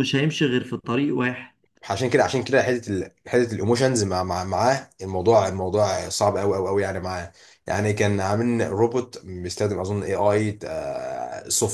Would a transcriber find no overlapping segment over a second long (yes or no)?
yes